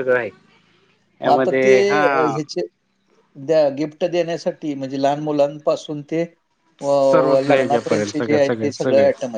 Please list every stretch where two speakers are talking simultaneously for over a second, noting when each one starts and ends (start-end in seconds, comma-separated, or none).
6.8-8.4